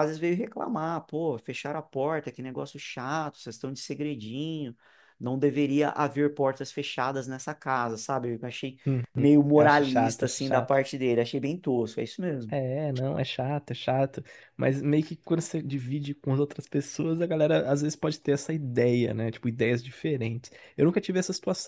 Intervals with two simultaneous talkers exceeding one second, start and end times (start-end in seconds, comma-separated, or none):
9.5-10.8